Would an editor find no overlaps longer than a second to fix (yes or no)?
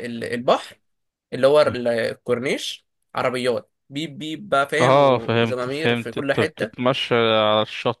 no